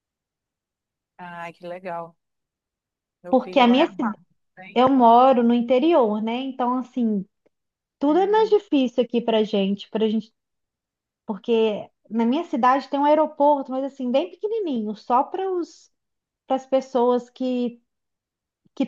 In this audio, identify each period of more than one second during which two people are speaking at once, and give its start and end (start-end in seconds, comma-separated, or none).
none